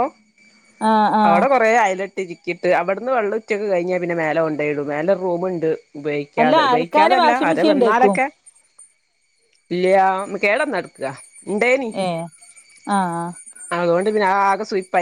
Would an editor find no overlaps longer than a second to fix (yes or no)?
no